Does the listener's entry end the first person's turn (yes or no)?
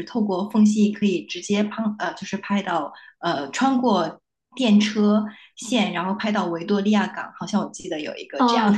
yes